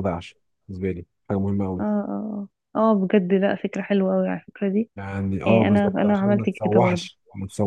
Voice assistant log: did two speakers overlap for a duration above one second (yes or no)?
yes